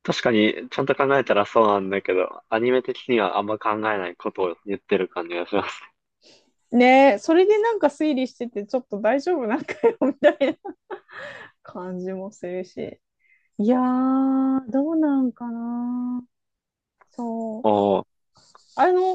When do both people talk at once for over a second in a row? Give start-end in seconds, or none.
none